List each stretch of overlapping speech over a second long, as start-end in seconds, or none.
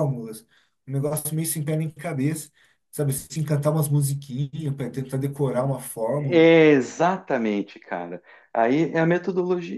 none